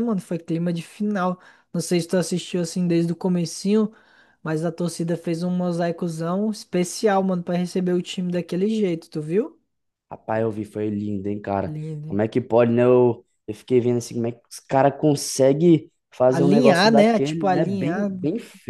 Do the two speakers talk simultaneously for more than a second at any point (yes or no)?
yes